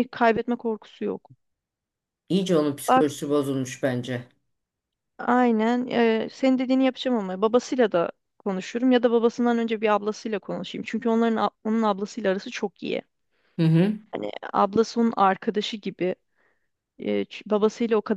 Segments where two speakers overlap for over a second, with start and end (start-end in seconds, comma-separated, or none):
none